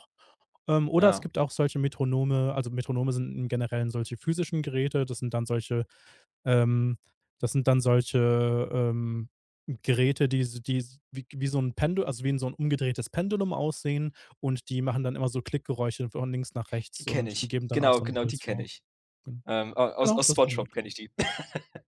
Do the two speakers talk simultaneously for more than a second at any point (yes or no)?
yes